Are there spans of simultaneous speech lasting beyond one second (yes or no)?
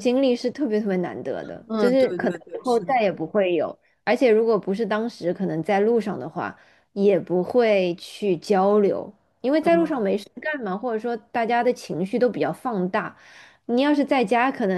yes